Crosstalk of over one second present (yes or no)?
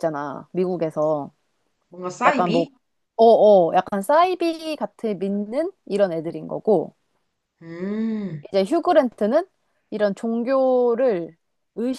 no